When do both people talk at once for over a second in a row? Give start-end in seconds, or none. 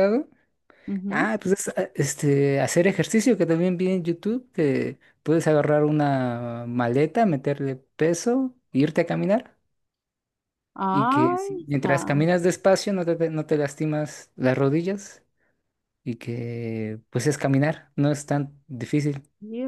10.9-12.2